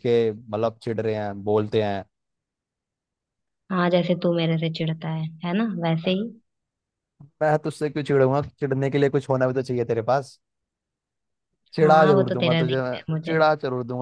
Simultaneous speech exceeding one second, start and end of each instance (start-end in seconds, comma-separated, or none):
11.8-13.4